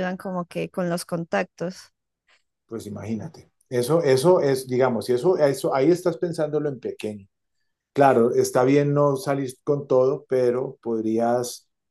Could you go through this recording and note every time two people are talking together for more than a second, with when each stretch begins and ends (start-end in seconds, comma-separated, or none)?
none